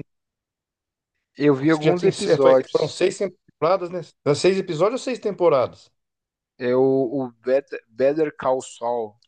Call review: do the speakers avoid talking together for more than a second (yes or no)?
no